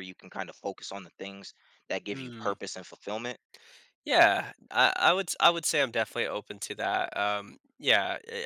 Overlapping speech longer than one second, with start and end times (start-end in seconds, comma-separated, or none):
none